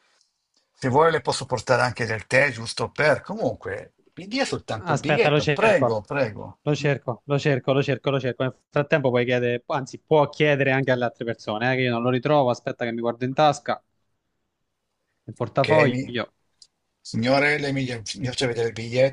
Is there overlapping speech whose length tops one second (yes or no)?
yes